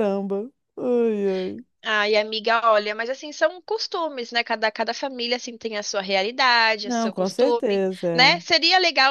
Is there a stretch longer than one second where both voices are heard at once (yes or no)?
yes